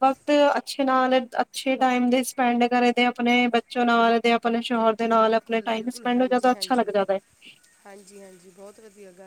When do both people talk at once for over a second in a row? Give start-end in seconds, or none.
5.2-6.9